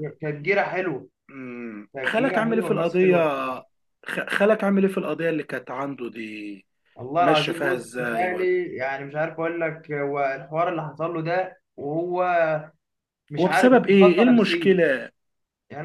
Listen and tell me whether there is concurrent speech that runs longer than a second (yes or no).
yes